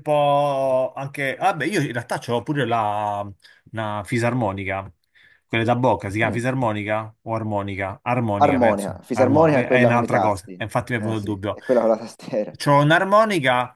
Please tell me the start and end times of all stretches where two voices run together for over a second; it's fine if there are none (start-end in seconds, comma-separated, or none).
8.3-11.6